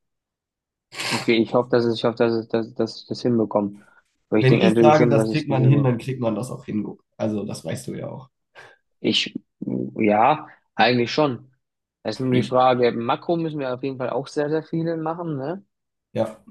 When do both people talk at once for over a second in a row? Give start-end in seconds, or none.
4.4-5.9